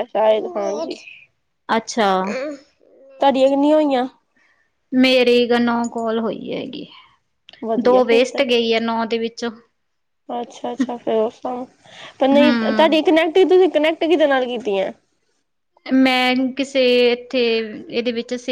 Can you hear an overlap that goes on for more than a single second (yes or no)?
no